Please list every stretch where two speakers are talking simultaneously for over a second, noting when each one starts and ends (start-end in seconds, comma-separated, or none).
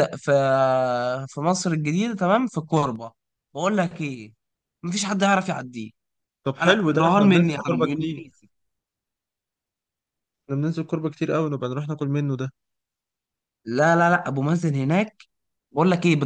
6.6-8.2